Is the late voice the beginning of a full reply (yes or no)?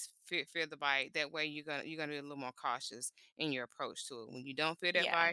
no